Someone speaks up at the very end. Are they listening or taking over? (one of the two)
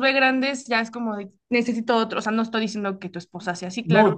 taking over